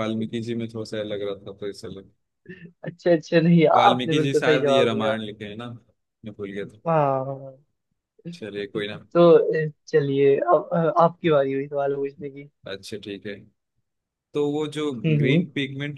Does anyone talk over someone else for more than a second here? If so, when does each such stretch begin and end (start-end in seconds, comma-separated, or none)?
3.8-5.2